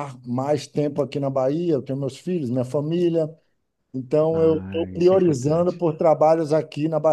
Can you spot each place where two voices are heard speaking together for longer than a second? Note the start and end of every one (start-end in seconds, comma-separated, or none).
4.3-5.8